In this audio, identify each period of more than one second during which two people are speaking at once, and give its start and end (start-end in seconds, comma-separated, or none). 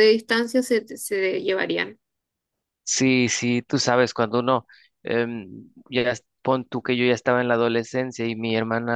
none